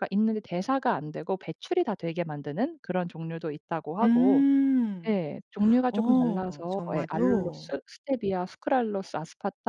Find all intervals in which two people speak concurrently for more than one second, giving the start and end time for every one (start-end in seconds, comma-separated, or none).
5.9-7.7